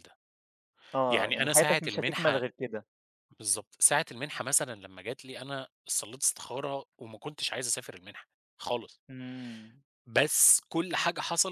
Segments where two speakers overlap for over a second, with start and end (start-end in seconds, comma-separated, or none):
1.1-2.4